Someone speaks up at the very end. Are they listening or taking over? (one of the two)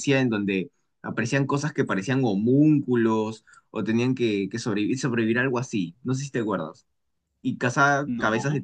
listening